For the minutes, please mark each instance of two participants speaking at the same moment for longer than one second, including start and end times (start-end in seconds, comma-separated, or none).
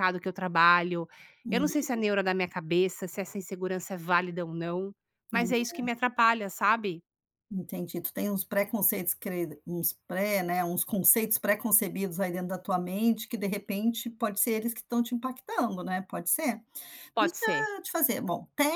none